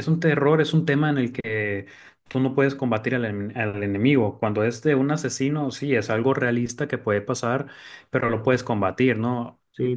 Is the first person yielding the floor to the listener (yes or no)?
no